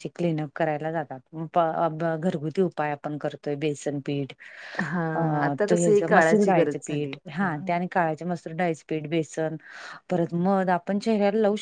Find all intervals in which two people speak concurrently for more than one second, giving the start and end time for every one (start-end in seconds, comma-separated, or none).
5.7-7.1